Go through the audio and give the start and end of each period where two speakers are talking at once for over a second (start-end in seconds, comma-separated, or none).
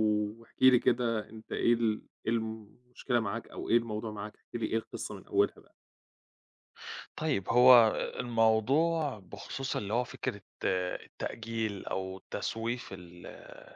none